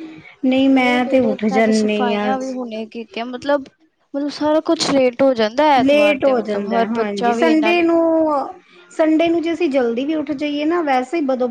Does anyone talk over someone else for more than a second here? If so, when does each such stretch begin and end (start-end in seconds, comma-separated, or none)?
5.8-7.9